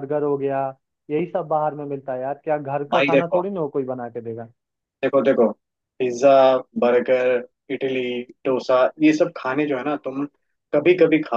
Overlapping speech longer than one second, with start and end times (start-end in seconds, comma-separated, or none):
none